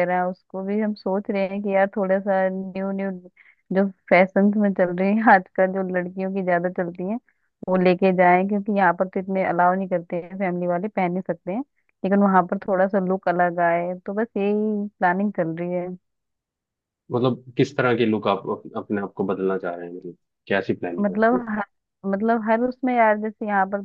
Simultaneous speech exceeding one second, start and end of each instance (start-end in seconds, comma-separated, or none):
none